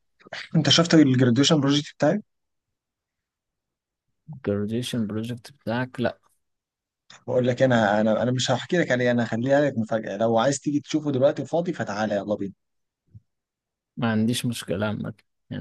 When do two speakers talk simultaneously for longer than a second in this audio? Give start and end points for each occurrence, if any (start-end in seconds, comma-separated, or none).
none